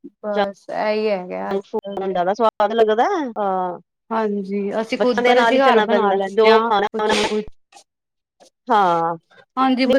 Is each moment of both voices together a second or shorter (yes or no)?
no